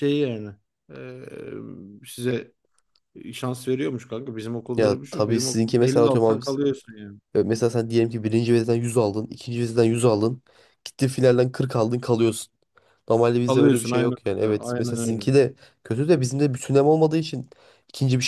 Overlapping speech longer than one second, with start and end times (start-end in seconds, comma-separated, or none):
4.8-6.6, 13.5-15.3